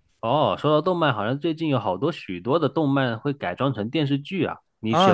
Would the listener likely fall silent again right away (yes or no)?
no